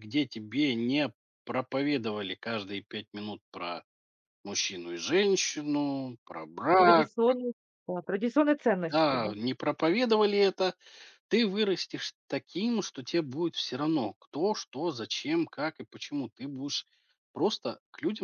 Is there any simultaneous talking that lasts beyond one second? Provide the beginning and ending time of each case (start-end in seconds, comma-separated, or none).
none